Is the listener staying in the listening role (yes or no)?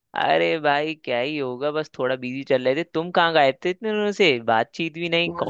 no